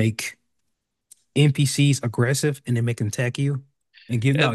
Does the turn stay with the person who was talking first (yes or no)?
yes